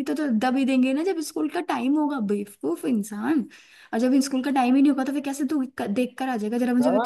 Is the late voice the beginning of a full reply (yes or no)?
yes